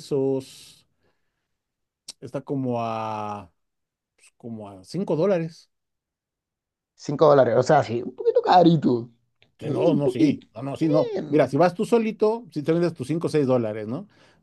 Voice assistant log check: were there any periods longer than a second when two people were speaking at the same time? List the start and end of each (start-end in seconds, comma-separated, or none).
9.6-11.4